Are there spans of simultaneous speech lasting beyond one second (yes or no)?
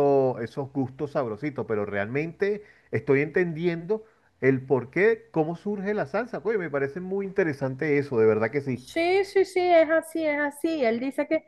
no